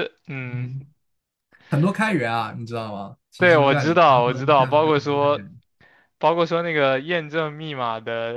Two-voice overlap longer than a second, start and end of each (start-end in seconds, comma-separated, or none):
3.4-5.5